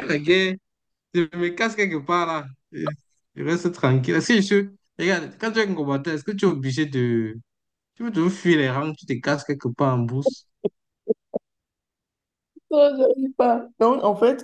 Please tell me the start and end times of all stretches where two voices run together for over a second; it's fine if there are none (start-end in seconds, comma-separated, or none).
none